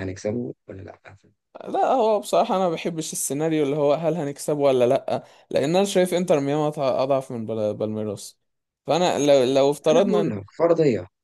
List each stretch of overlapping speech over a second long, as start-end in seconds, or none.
none